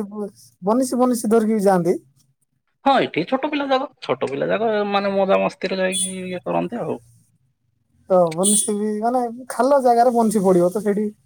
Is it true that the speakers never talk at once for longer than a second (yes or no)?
yes